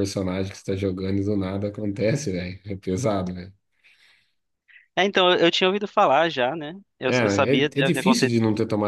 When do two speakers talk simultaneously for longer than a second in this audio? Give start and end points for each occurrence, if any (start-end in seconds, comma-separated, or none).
7.1-8.3